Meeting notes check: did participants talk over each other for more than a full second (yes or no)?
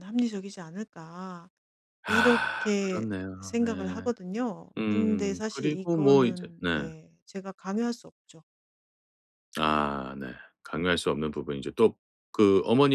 yes